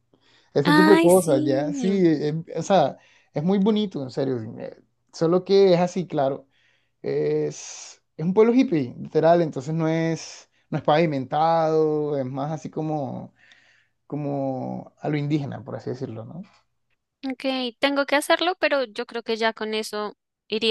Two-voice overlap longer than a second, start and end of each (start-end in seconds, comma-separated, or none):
0.8-2.0